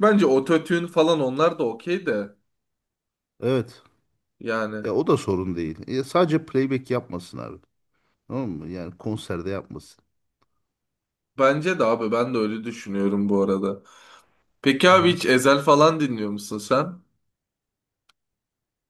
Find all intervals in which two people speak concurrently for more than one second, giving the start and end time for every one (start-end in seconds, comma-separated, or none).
none